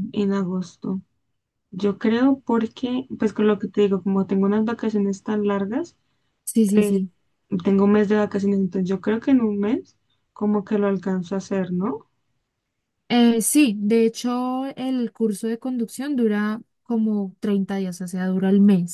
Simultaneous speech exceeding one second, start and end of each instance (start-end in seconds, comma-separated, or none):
none